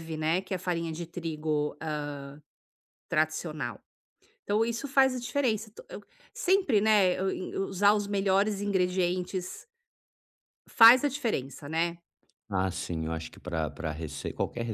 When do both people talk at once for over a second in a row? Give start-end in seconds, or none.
none